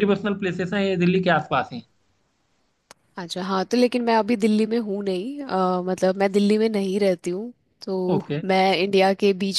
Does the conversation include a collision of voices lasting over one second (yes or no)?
no